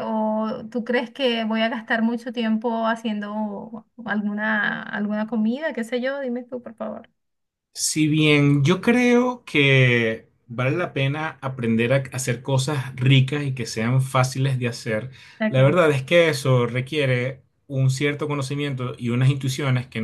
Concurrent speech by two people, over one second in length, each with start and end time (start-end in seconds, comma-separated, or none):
none